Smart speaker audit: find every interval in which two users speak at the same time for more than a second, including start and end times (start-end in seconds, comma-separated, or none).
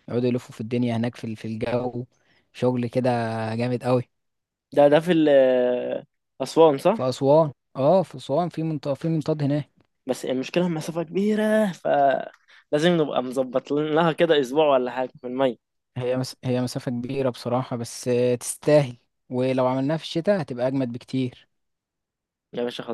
none